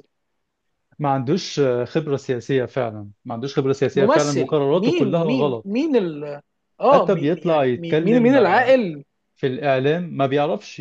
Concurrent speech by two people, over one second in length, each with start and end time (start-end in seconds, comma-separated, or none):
4.0-5.9, 6.9-8.4